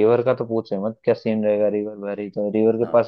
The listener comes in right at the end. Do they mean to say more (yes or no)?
no